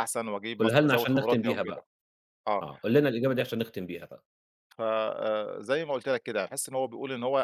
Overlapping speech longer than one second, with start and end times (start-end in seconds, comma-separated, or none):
0.6-1.8